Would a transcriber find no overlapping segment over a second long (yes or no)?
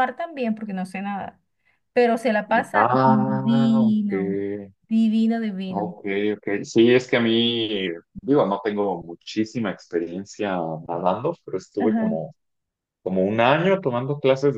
no